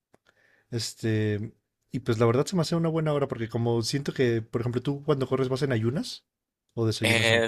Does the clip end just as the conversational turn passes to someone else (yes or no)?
yes